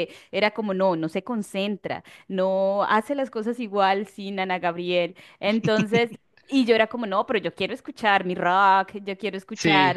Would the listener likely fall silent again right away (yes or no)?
yes